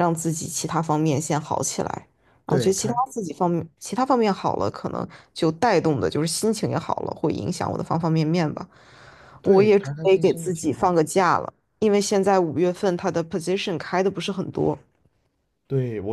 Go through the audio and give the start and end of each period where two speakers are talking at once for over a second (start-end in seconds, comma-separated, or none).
9.4-10.9